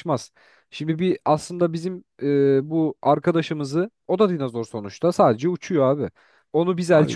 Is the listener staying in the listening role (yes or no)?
yes